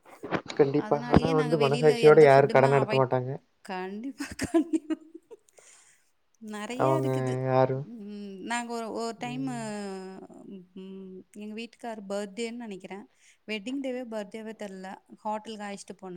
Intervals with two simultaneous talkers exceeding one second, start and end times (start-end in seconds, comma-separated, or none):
0.9-3.2